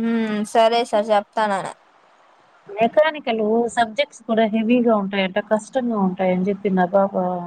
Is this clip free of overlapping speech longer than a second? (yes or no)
yes